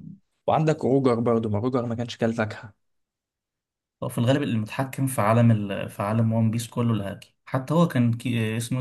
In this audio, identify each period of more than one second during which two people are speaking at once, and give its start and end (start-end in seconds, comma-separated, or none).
none